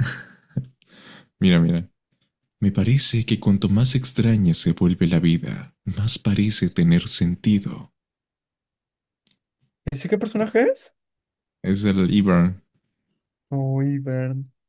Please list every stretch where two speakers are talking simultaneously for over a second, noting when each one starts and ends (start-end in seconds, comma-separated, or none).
none